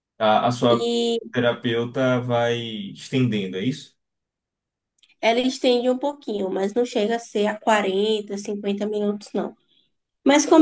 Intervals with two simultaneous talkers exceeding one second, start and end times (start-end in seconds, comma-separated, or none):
none